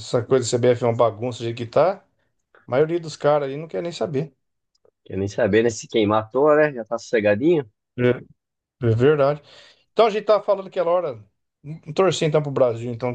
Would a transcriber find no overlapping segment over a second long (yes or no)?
yes